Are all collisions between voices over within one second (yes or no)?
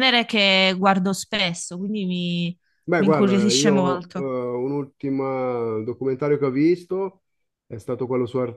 no